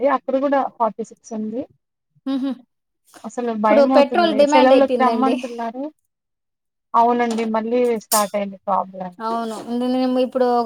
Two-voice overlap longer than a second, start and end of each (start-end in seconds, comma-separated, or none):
3.6-5.3